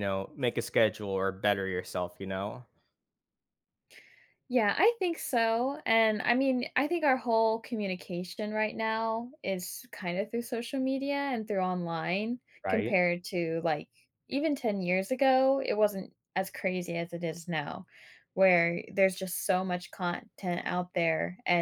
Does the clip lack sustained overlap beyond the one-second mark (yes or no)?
yes